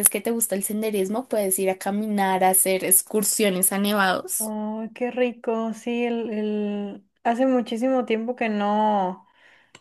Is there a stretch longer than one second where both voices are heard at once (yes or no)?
no